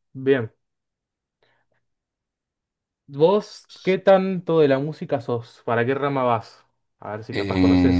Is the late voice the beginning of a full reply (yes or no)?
yes